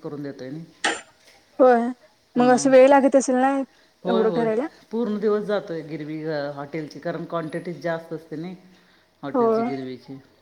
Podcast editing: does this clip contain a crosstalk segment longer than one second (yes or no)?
no